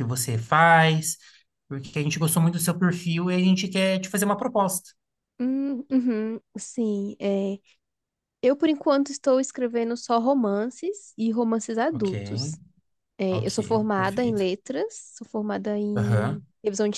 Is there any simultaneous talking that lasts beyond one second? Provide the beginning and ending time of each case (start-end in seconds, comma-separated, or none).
13.3-14.5